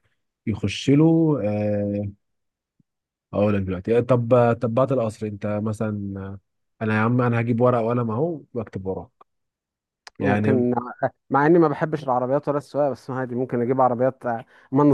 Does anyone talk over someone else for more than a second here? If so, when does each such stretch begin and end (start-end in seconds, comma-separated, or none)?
none